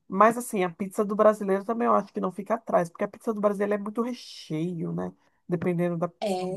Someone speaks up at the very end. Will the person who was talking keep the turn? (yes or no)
no